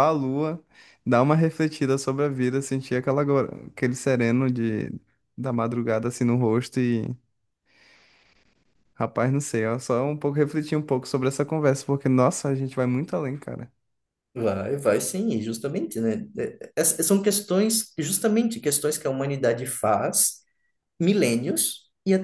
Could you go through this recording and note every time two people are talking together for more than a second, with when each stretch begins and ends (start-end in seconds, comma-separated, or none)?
none